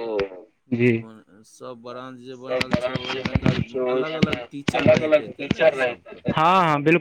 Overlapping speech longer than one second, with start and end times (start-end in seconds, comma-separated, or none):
2.3-6.2